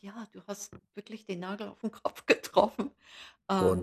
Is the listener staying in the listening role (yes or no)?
no